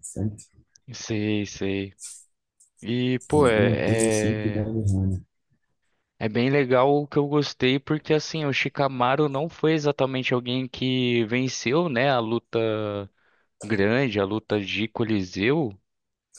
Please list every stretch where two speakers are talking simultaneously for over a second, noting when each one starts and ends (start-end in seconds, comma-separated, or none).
3.4-4.7